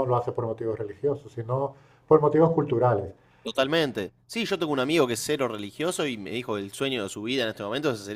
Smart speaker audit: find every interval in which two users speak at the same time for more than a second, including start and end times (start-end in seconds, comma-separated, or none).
none